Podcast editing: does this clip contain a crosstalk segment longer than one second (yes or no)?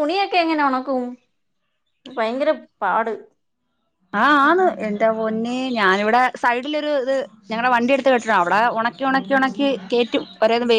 no